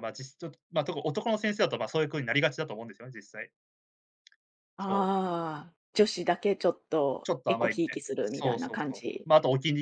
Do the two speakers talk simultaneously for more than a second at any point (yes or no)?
yes